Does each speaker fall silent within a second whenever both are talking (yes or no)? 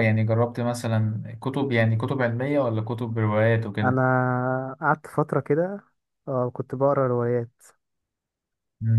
yes